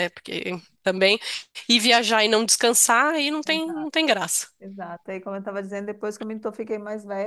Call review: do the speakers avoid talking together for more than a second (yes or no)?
yes